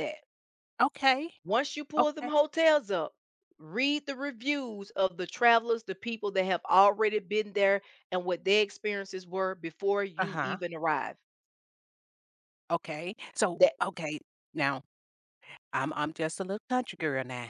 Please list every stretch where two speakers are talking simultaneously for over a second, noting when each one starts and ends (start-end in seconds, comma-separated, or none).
none